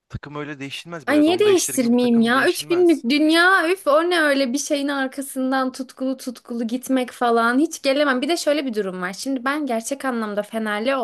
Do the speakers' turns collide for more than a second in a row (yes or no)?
yes